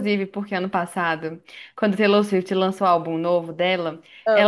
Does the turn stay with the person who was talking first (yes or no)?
yes